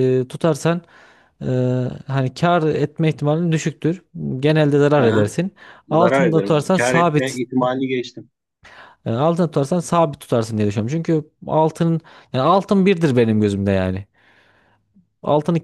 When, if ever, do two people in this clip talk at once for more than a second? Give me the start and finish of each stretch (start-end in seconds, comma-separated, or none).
5.9-7.4